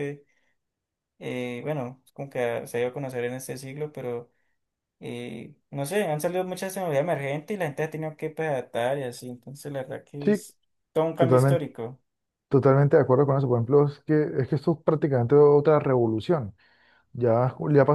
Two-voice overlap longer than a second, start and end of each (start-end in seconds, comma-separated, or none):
none